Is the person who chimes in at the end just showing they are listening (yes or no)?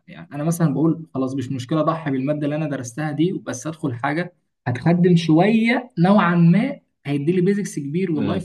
yes